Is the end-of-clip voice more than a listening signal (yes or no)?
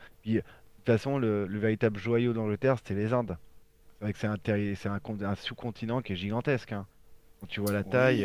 yes